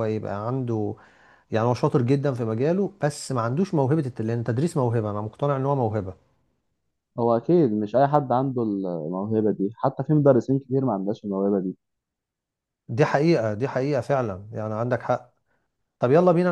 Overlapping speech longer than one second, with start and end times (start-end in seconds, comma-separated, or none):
none